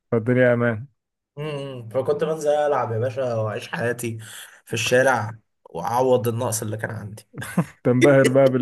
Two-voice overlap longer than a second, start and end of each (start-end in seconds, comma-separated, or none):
none